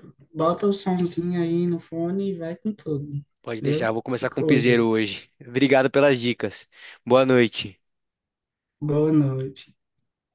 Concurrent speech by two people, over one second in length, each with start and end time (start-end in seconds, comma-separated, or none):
3.6-4.9